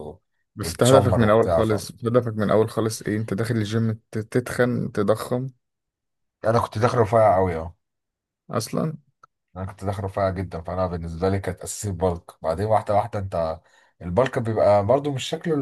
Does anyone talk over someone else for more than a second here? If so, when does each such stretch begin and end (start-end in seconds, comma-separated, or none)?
0.6-1.9